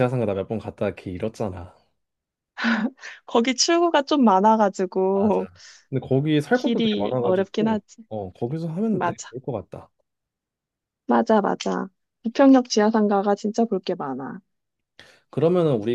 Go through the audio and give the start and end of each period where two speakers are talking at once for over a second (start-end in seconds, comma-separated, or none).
6.5-8.0